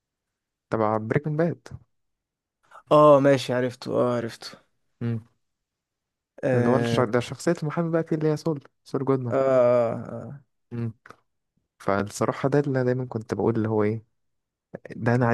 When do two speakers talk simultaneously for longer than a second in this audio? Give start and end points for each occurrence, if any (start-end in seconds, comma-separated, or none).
none